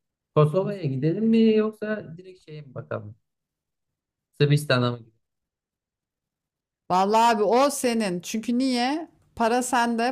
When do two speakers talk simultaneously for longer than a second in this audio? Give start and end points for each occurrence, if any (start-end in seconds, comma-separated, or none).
none